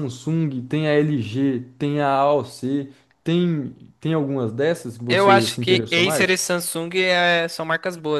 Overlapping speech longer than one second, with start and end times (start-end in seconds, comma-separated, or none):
5.1-6.3